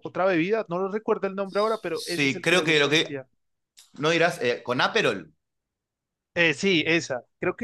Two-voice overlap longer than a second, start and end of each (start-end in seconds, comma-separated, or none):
1.9-3.2